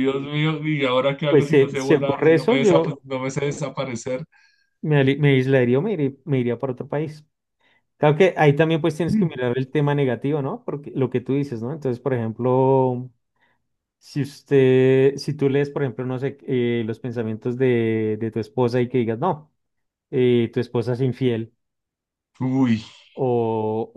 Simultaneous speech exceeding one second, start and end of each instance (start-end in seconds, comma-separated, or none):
1.3-3.0